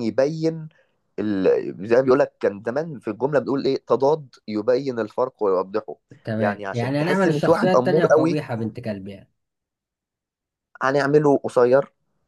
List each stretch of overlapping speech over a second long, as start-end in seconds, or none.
6.4-8.4